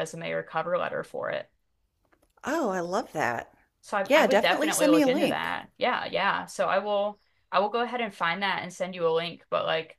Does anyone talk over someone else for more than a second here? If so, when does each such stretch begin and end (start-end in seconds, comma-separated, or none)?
4.1-5.5